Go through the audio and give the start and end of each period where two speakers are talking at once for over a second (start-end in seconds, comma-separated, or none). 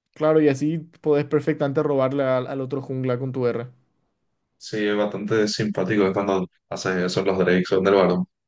none